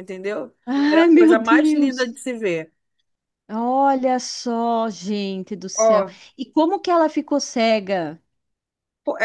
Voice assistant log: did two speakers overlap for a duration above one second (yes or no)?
yes